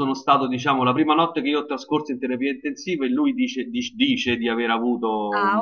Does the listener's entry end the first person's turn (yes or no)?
yes